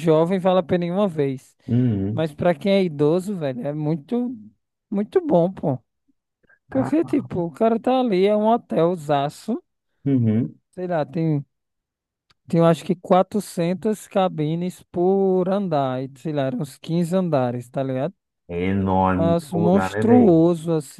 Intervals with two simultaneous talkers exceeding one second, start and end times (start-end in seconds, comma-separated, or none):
19.1-20.4